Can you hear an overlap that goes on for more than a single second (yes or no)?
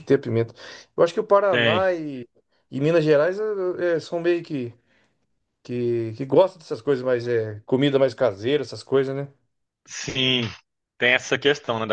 no